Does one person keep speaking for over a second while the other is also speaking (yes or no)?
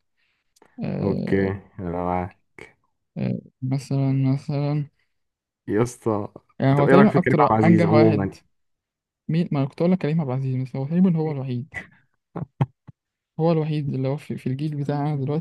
yes